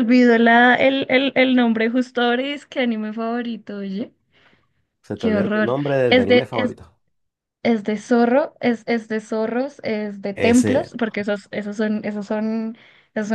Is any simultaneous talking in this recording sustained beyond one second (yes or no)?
yes